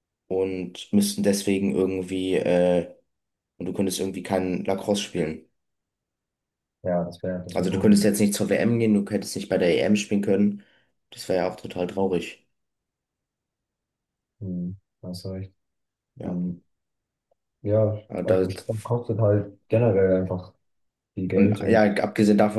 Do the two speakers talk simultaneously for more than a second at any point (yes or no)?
no